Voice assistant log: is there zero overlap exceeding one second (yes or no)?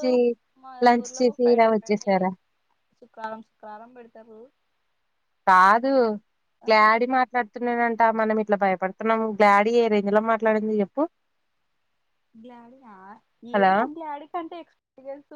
yes